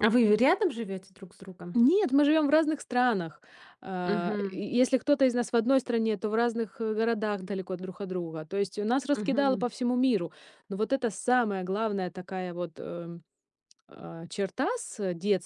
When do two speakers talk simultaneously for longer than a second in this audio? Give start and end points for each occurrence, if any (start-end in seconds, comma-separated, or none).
none